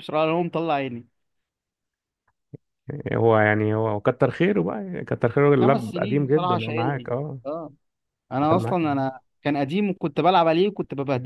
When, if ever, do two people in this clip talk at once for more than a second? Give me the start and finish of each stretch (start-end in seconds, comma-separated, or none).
5.6-7.4